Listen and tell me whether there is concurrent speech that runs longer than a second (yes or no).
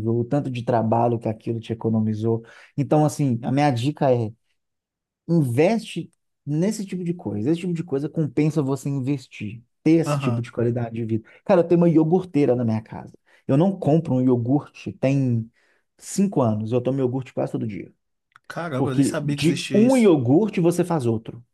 yes